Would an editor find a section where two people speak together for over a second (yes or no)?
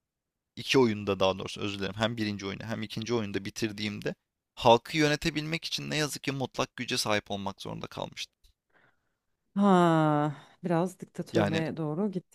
no